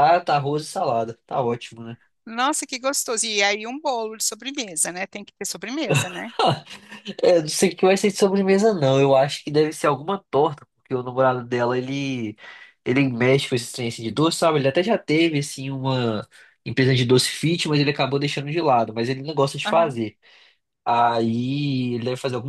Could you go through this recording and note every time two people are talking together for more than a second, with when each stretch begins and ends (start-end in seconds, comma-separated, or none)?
none